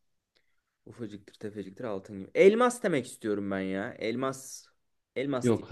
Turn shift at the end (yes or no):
yes